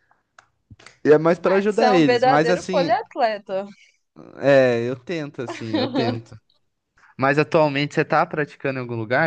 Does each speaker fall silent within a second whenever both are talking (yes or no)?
no